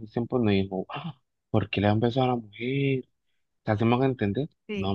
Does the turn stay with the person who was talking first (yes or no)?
yes